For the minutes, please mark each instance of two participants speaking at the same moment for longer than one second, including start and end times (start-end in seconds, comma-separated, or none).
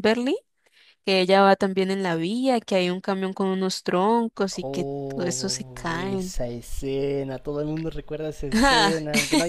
4.6-6.3